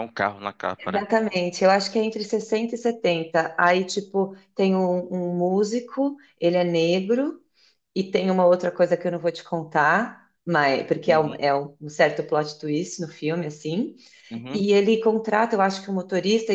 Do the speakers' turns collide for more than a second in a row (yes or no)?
no